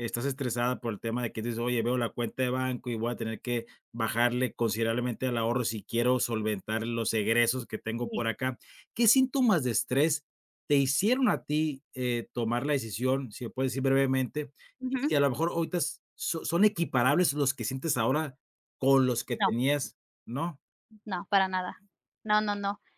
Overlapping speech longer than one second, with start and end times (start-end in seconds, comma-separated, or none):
none